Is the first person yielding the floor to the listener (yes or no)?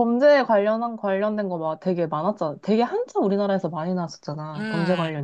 yes